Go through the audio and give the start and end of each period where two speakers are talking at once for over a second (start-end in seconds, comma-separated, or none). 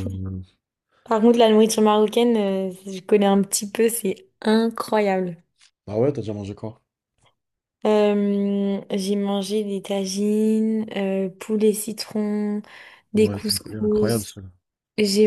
13.2-14.3